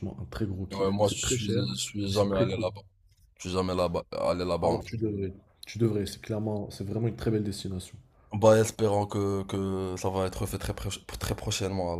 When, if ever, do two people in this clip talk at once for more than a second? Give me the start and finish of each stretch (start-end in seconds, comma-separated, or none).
0.7-2.7